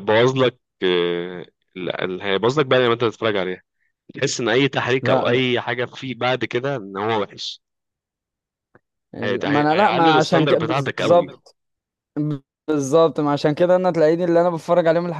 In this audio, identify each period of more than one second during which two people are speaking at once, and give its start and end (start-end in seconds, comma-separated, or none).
9.4-11.4